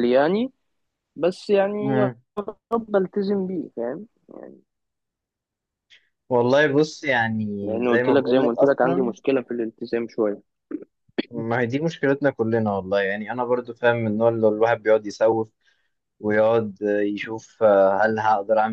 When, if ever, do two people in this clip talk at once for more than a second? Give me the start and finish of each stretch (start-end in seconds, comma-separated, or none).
7.9-9.1